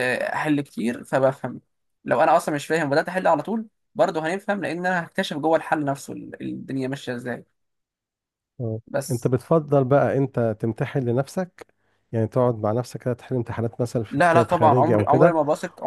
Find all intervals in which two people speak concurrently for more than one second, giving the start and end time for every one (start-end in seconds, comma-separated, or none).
14.1-15.4